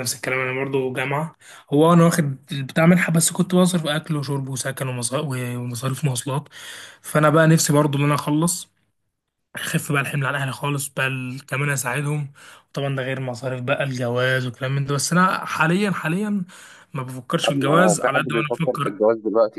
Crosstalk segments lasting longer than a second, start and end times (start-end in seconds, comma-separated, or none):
17.4-19.0